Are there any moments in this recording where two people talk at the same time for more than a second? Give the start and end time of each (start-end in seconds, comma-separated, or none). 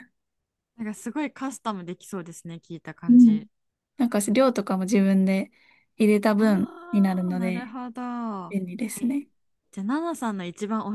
6.3-7.8